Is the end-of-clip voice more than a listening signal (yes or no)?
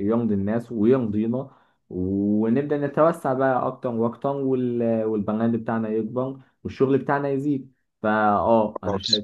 no